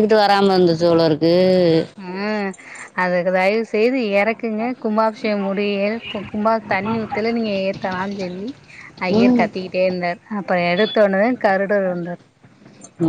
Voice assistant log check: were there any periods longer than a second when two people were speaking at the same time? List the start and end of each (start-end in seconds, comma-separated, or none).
none